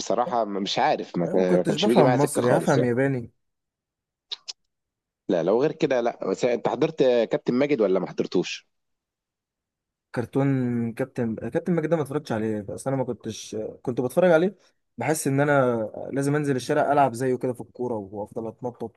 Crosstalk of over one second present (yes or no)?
yes